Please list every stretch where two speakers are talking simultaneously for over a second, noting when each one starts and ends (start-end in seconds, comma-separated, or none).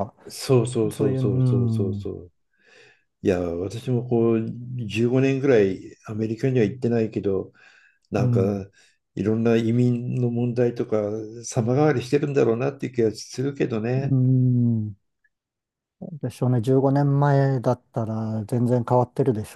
0.9-2.1